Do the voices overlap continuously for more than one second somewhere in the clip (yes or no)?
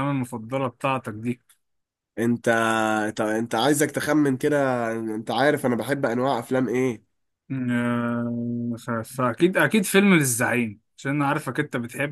no